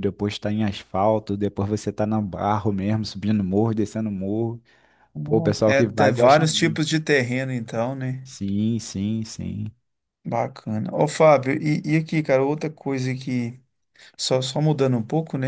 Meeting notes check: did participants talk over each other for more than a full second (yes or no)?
yes